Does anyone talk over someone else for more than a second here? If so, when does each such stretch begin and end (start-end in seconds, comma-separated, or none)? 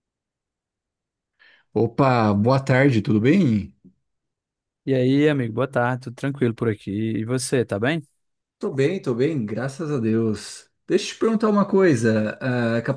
none